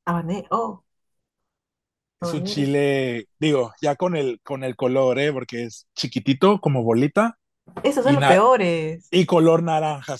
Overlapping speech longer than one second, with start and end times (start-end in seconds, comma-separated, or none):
none